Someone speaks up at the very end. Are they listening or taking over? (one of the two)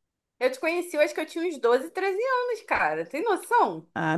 taking over